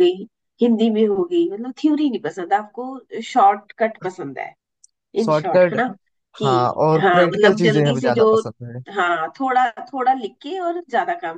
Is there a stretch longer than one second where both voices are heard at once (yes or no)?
yes